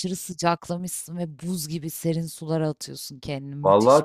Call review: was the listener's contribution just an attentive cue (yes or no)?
no